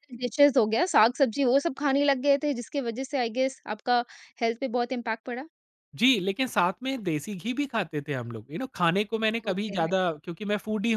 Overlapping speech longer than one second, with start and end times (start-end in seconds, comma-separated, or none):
none